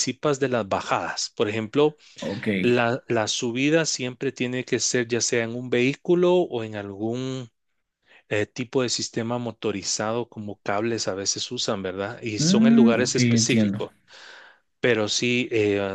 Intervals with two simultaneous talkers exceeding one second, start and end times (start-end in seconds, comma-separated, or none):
12.4-13.9